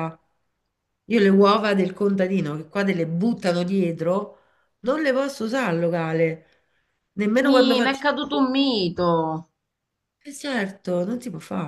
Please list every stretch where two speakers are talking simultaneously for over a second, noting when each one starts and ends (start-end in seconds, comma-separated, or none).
none